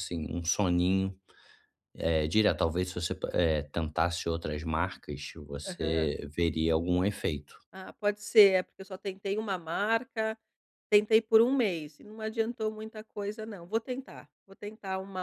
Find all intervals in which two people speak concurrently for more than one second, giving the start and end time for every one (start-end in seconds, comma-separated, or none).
none